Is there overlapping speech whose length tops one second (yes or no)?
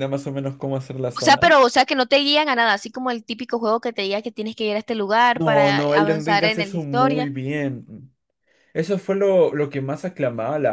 yes